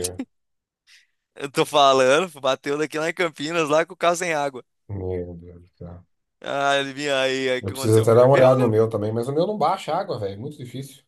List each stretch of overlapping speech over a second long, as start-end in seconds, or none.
7.6-8.8